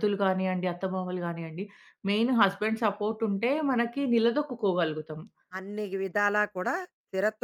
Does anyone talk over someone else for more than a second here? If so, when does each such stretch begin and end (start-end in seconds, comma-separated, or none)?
none